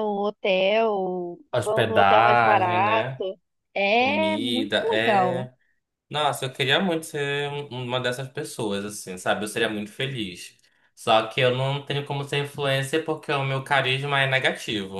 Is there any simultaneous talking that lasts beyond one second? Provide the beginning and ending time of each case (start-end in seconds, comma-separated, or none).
1.5-3.2, 3.9-5.5